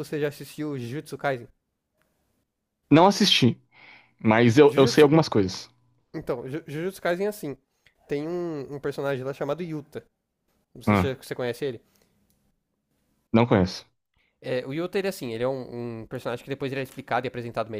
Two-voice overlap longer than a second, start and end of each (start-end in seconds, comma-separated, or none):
none